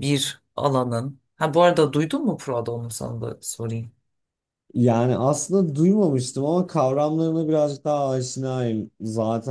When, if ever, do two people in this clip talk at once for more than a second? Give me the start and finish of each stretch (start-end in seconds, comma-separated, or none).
none